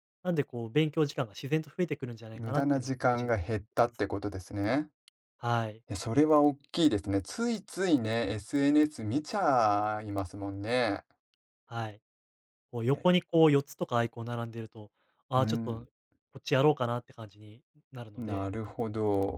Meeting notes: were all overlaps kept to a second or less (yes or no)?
no